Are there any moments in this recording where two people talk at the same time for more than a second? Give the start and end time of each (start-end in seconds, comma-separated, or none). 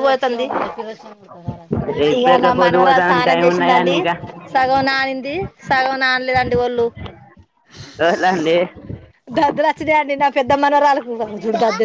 2.2-3.9